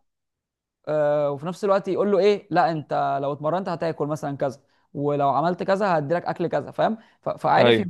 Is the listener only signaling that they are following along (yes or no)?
yes